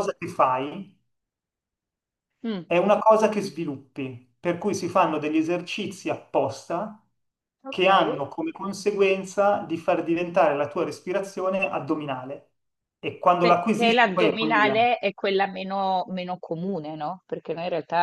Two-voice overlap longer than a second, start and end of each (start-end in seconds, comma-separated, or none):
13.4-14.8